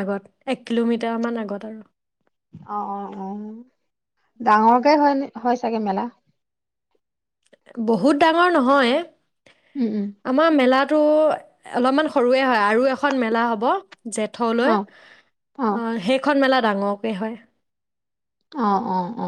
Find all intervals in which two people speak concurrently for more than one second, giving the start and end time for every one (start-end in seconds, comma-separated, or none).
none